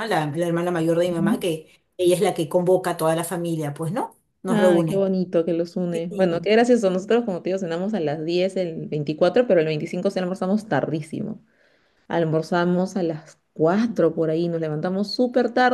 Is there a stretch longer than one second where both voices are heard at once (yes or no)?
no